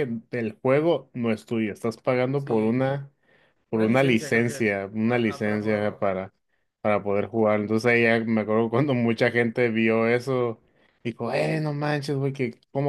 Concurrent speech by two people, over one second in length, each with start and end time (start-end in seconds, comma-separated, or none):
3.7-6.1